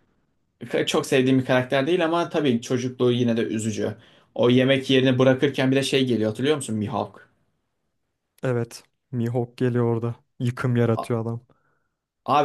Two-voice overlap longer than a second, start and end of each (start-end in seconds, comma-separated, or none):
none